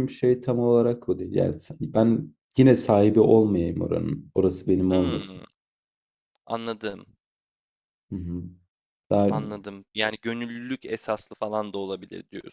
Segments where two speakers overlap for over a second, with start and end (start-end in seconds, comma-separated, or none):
none